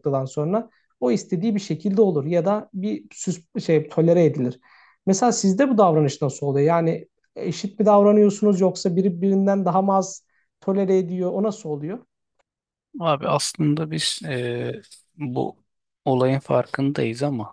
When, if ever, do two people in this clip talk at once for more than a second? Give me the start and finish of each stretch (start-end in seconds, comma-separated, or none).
none